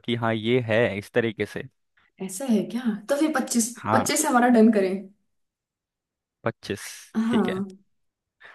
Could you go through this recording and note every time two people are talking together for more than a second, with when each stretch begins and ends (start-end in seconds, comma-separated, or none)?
none